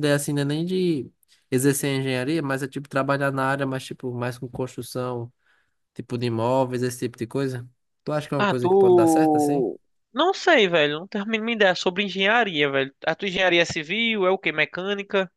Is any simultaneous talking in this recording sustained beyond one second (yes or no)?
yes